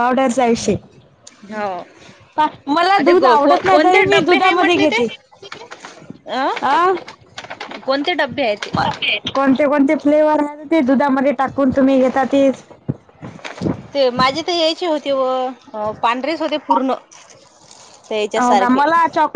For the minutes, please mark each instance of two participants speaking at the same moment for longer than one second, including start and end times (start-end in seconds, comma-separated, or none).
3.1-5.0